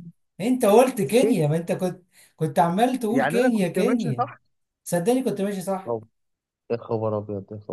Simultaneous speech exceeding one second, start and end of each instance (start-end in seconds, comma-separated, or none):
3.1-4.3